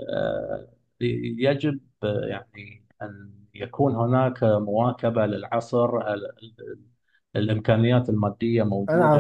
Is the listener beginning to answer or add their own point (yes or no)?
yes